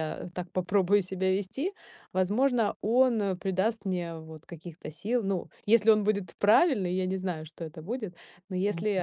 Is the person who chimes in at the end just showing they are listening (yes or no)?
yes